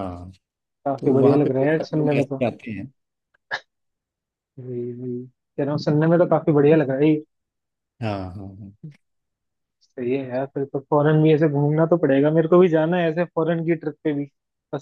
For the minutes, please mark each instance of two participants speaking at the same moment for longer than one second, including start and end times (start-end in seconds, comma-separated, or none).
1.0-2.4